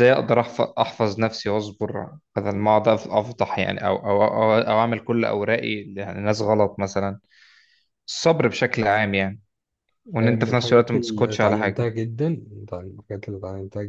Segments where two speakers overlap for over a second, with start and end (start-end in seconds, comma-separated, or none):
10.2-11.9